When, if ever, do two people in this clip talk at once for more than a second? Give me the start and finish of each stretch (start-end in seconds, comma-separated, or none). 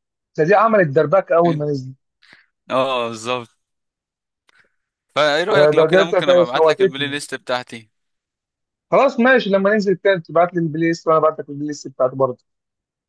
5.5-7.2